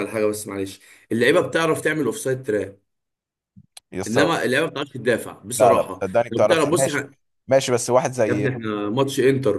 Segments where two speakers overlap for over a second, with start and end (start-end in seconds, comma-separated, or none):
5.6-7.0